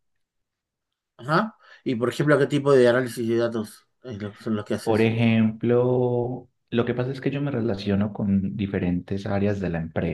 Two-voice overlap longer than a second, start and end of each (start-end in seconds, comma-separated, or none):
none